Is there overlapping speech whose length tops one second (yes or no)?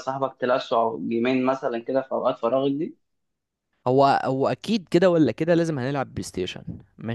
no